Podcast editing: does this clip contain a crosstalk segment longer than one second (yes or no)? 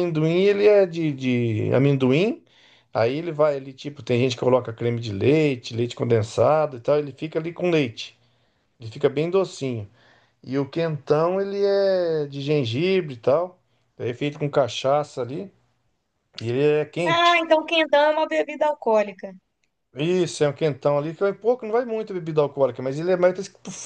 no